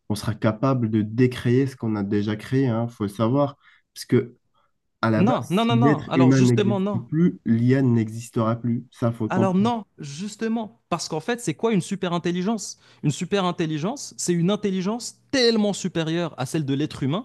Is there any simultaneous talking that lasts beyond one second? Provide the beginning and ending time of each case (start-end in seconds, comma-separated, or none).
5.3-7.0